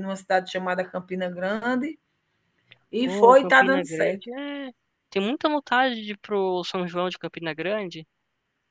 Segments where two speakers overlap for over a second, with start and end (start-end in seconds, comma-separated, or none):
3.0-4.3